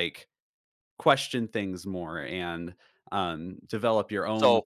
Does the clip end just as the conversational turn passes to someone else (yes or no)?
no